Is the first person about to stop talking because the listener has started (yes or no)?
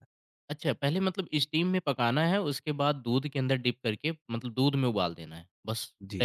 yes